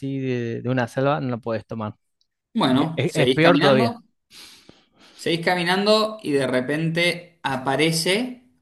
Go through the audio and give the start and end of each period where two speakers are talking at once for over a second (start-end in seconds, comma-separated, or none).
2.7-4.0